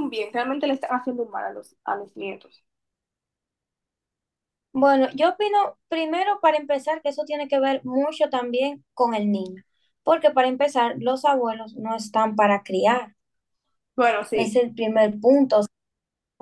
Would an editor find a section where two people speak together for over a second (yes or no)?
no